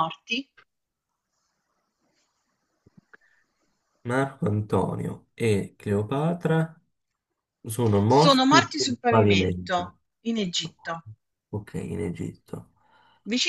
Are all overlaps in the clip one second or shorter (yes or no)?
no